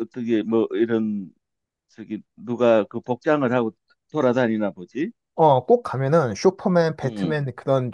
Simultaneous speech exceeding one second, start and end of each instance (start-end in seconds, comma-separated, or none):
none